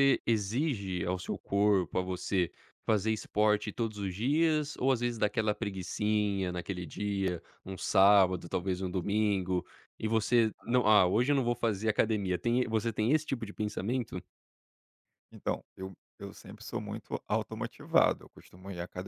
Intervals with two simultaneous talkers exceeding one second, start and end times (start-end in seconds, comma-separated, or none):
none